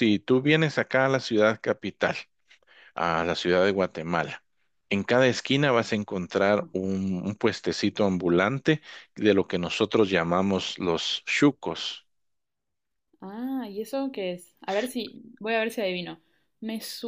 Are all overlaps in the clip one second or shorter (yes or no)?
yes